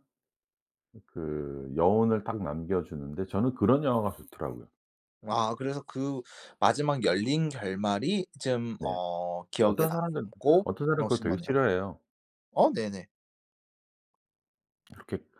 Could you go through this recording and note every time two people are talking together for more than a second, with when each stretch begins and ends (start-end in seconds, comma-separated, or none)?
9.6-11.6